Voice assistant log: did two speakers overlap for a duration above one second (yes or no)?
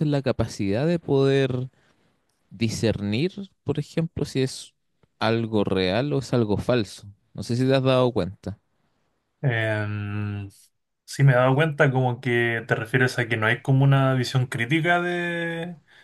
no